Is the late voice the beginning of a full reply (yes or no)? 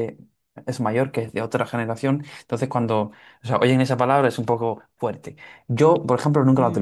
no